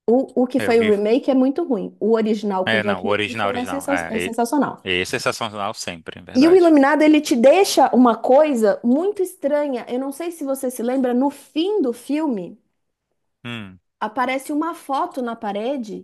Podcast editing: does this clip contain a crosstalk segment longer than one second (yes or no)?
yes